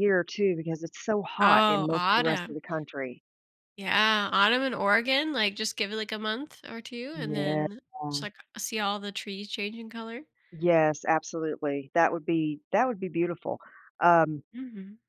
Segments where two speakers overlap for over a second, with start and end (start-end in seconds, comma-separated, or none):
1.4-2.6